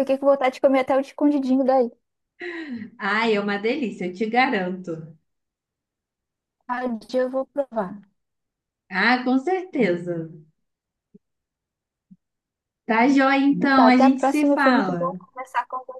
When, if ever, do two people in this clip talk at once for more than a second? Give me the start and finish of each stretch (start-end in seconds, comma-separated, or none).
13.6-15.2